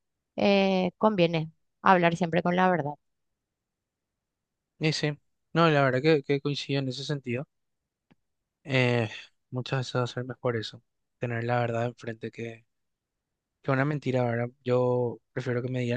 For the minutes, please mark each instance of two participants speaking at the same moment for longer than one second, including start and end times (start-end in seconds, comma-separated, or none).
none